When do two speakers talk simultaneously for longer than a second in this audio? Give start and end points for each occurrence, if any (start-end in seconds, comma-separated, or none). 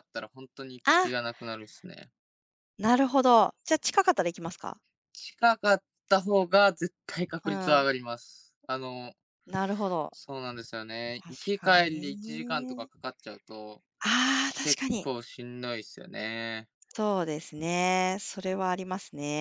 11.1-12.9